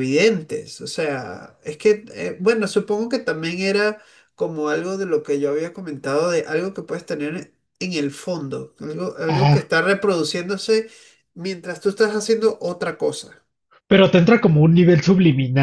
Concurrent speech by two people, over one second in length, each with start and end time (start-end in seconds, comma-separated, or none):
none